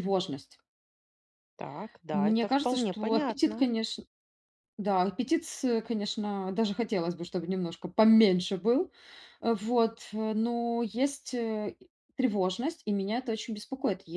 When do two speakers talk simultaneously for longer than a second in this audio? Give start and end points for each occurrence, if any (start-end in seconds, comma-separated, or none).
2.1-3.6